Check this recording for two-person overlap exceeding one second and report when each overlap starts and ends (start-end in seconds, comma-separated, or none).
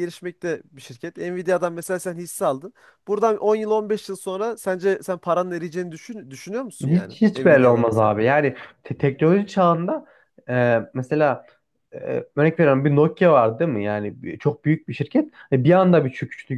6.9-8.1